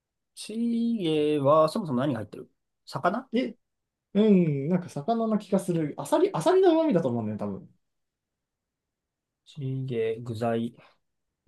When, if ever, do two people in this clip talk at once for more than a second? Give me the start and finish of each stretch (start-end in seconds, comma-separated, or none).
none